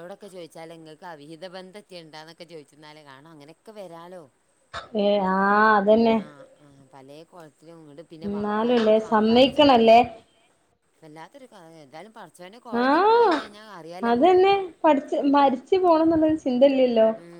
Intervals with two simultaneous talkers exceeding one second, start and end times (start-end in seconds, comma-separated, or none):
8.3-10.0